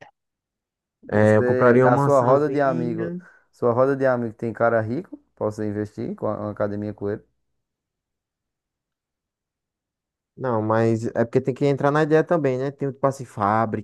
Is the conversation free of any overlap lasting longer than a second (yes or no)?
no